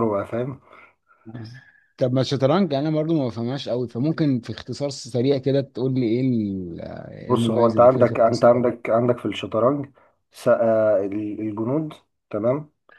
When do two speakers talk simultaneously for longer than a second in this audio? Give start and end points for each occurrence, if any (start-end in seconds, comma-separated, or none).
7.3-8.6